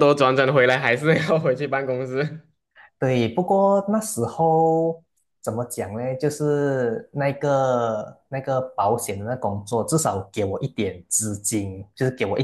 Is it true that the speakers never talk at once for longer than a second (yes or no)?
yes